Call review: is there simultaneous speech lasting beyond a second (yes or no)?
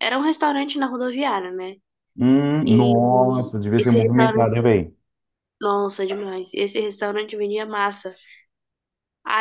yes